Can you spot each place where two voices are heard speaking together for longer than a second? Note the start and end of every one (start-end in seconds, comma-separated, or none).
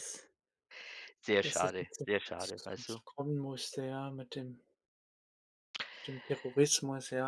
1.4-3.0